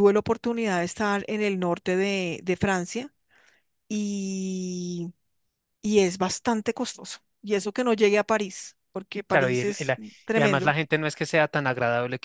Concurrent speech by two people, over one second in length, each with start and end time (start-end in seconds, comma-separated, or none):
9.3-10.8